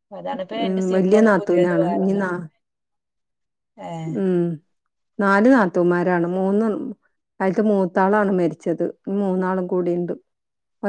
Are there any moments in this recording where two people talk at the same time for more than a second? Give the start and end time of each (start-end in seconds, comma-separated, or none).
0.6-2.3